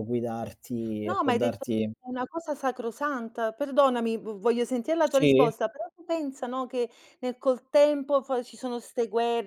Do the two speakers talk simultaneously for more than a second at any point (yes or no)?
no